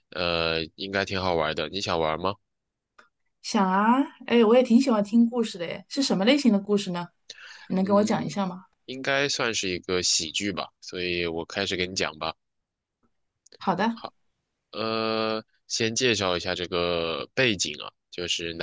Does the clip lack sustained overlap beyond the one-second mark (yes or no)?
yes